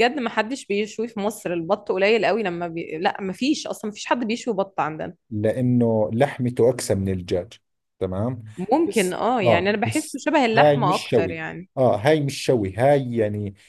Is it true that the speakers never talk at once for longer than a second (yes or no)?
no